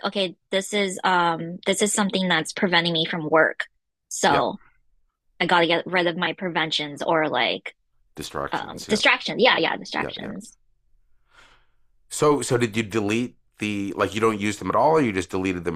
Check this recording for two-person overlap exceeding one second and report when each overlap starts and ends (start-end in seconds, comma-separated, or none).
none